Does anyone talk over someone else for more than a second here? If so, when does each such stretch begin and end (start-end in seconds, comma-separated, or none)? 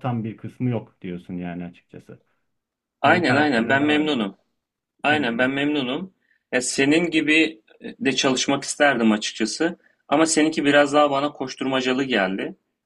3.0-4.3